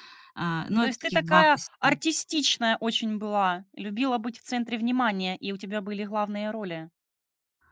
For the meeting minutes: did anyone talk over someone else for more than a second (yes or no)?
yes